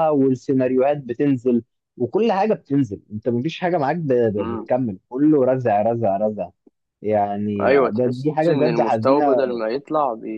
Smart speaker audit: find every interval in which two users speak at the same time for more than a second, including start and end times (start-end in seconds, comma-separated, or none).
7.6-9.2